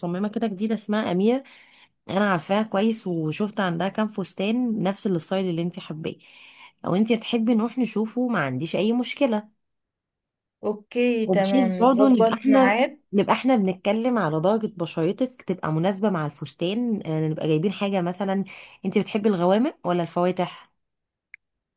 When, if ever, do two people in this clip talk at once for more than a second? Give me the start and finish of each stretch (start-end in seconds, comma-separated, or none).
11.3-12.8